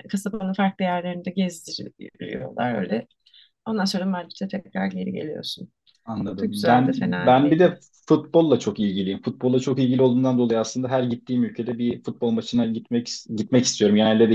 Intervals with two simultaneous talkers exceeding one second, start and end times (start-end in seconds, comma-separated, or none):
6.3-7.7